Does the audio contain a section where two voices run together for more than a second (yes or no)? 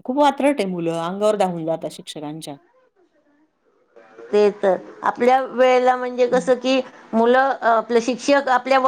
no